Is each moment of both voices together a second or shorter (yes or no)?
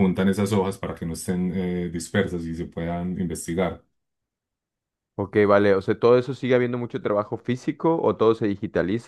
yes